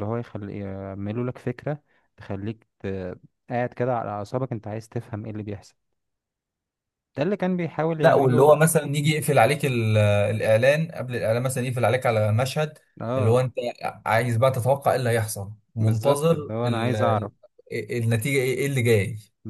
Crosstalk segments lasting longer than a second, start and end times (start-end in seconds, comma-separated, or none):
15.8-17.3